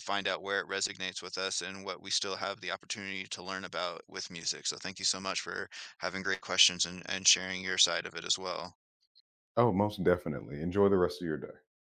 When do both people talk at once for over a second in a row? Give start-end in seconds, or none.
none